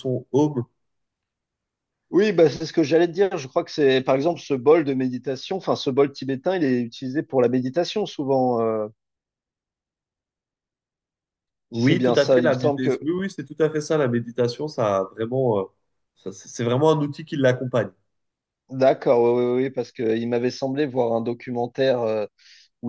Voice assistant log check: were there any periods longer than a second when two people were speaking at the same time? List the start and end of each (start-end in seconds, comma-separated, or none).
11.7-13.1